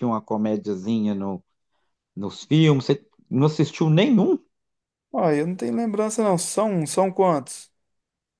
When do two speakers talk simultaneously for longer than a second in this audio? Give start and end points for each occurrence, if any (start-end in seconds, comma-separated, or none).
none